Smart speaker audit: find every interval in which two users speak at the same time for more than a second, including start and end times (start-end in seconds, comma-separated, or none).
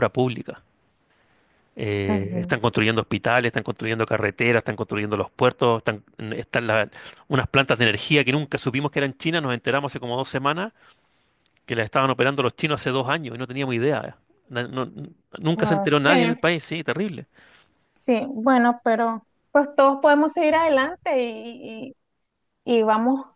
none